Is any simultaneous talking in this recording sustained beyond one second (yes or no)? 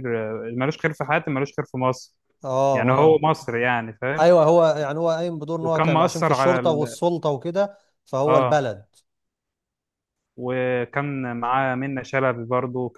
yes